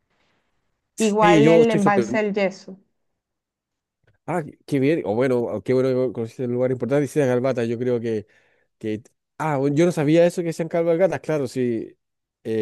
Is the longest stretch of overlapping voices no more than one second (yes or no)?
no